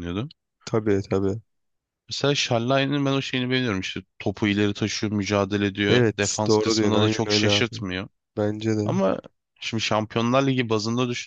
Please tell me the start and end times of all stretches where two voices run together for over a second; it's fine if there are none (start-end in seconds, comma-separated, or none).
5.9-7.7